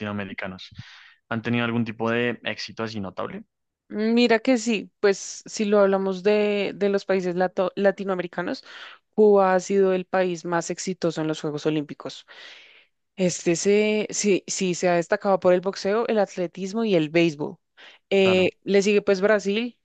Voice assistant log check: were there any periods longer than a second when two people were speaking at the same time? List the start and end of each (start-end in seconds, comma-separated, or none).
none